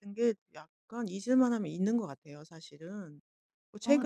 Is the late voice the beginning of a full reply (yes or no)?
no